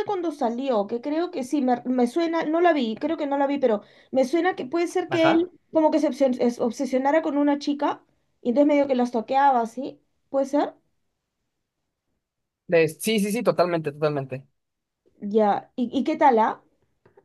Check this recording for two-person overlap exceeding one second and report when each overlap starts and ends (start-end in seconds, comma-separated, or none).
none